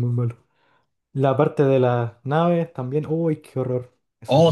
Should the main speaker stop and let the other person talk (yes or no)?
yes